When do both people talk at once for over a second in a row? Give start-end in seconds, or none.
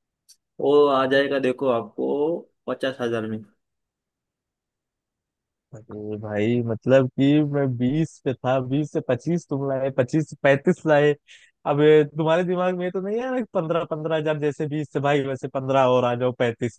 none